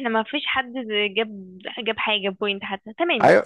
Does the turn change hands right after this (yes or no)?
yes